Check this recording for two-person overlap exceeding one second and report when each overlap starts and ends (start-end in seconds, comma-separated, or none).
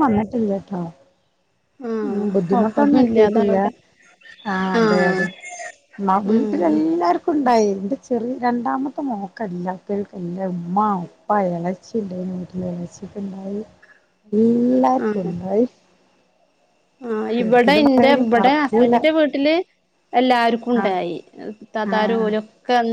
2.1-3.6, 17.4-18.9